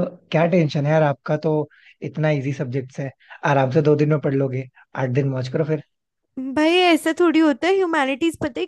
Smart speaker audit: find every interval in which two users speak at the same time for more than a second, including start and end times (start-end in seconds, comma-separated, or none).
none